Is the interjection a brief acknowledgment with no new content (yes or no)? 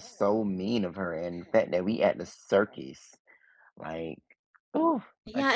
no